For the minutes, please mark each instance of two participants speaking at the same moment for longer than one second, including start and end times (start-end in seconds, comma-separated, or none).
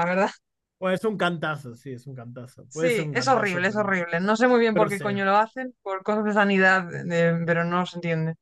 2.7-3.9